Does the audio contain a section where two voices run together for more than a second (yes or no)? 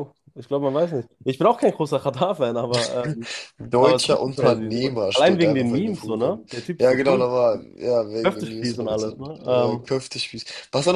yes